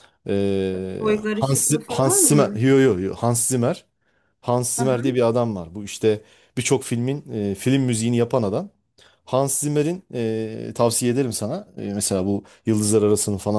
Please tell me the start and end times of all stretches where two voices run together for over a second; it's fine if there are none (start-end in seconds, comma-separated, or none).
1.0-2.6